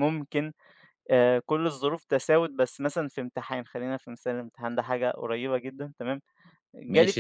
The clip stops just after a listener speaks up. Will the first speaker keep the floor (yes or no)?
no